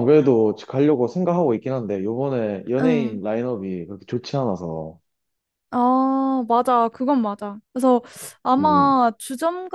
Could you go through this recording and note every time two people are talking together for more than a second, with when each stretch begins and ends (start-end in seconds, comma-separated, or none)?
none